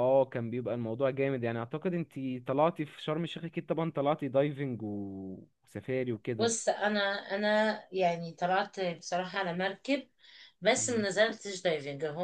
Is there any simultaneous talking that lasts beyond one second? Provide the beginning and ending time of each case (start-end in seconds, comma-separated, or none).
none